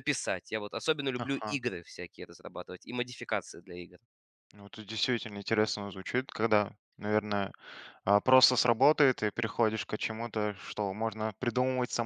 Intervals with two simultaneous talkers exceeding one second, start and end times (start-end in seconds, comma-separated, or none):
none